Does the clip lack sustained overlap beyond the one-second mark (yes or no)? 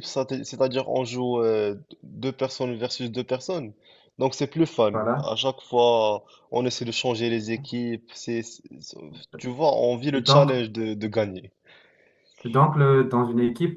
yes